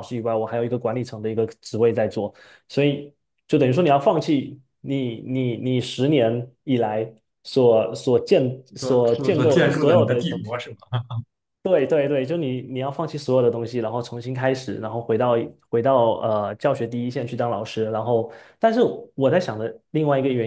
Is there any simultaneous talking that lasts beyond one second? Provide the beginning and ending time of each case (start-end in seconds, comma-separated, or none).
8.8-10.6